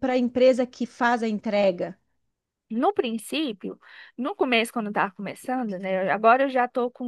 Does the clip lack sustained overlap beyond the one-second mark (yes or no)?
yes